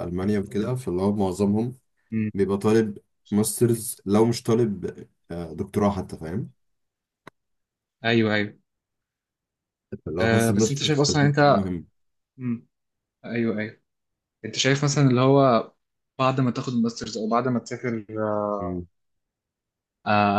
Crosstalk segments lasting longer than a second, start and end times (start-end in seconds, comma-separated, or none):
10.2-11.7